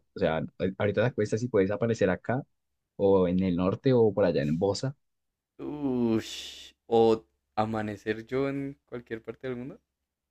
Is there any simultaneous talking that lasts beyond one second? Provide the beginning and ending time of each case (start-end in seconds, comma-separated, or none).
none